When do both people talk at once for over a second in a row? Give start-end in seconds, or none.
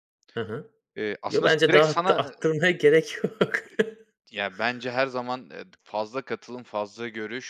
1.3-2.5